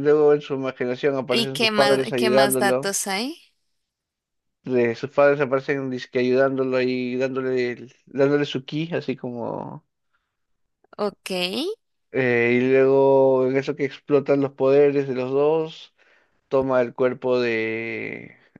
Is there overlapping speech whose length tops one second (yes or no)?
yes